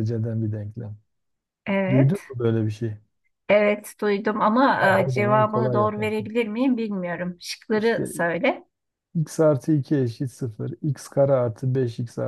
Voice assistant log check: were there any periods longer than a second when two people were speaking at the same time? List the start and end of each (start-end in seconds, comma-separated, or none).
4.8-6.3